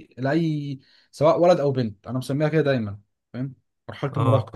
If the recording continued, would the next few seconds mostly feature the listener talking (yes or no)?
yes